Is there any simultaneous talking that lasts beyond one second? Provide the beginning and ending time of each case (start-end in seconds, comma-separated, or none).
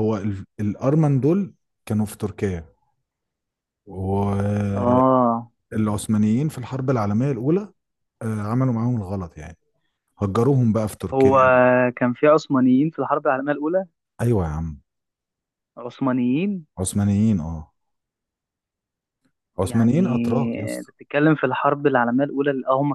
19.6-20.9